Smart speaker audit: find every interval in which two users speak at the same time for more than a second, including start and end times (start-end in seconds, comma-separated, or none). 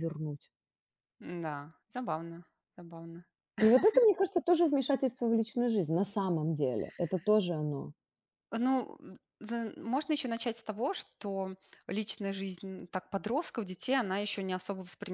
none